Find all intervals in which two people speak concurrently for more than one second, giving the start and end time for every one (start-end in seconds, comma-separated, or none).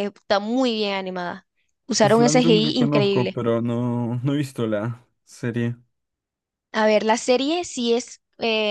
2.0-3.4